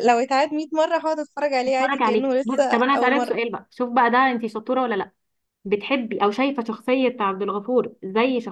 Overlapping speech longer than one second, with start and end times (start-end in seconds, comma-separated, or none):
1.6-3.4